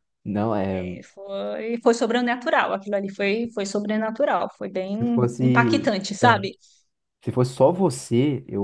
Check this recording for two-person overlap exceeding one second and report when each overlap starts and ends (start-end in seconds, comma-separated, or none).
4.8-6.5